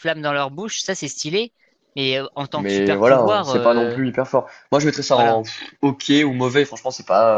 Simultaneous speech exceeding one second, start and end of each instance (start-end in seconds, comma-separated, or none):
2.5-4.0